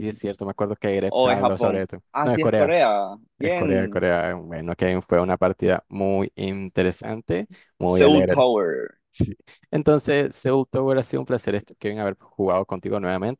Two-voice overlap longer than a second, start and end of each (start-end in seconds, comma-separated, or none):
1.1-2.8